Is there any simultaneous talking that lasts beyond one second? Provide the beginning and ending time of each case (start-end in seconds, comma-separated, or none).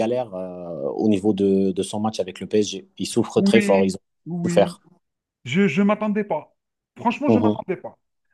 3.4-4.8